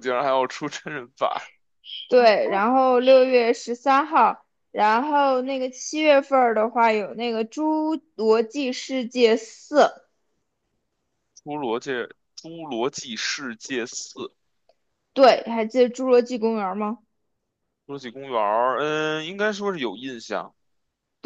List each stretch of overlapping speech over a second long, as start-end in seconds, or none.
none